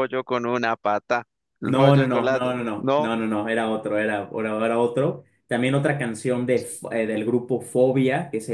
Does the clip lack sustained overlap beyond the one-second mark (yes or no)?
no